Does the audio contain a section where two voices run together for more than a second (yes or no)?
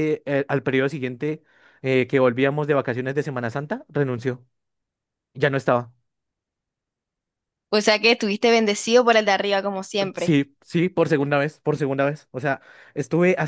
no